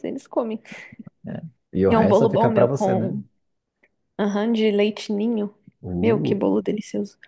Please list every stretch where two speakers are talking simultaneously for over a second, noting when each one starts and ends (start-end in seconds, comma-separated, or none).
1.9-3.1